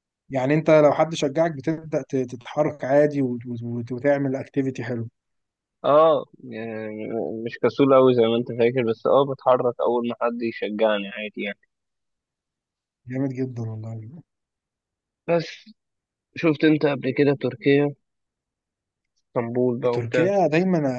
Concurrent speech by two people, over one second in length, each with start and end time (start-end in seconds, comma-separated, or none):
none